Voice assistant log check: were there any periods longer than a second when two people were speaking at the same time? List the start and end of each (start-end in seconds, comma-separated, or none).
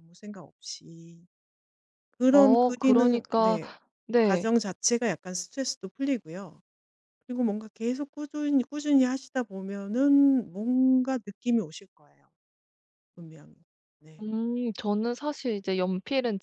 2.3-3.6